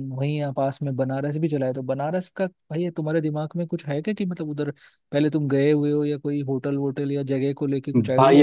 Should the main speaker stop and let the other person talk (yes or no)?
yes